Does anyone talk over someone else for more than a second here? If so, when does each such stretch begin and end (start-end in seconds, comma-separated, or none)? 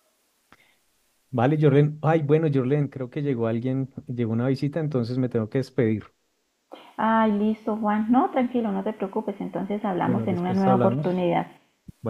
10.0-11.2